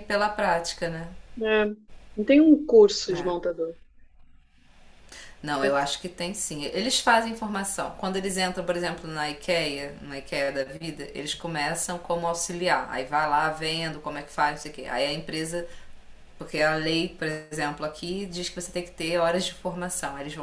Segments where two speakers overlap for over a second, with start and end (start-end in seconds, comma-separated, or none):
none